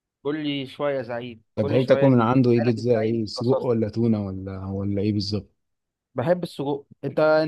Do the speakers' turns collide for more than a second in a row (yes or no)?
yes